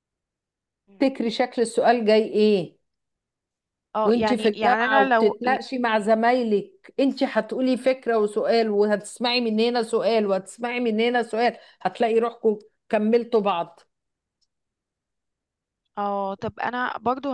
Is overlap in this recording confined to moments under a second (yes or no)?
no